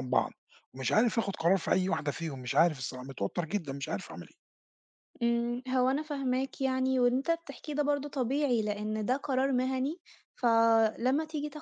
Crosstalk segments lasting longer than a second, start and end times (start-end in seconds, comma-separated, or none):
none